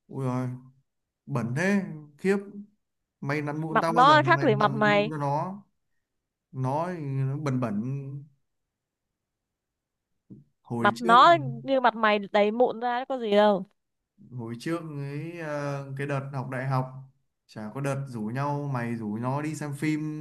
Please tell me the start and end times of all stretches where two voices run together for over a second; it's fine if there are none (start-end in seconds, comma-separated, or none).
3.7-5.1